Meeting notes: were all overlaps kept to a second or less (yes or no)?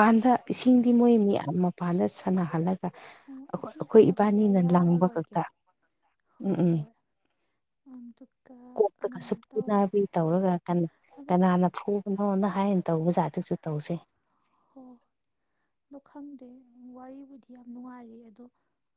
no